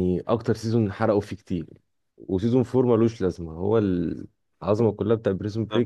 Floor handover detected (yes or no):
no